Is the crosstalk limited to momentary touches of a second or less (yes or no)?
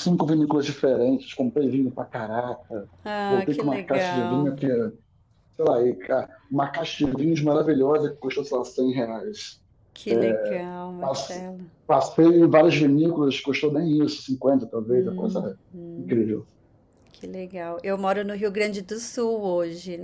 no